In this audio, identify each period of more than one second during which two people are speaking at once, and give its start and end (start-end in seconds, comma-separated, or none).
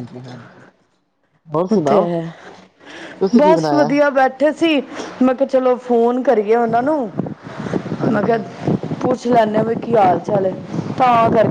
none